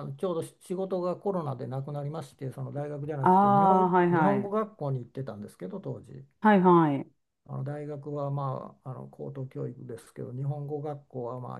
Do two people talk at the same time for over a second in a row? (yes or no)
yes